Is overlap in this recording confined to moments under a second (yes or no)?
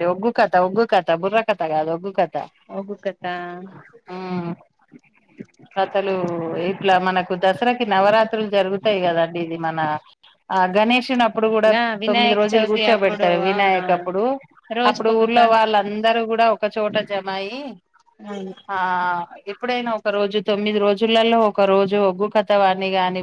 no